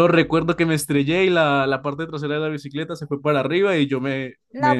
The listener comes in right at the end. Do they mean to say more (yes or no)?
yes